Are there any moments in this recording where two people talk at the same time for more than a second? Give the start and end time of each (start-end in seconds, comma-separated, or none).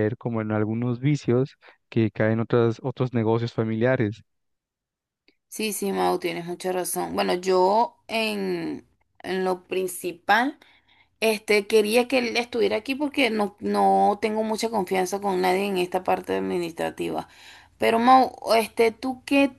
none